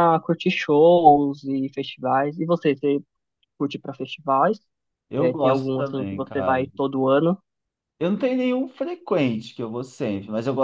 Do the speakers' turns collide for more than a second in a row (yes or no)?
yes